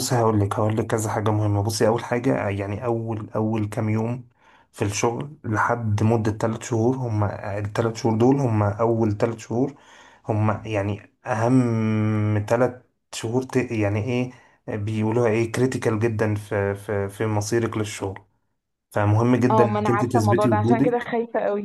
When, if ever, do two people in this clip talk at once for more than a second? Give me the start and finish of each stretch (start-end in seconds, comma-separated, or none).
19.5-21.1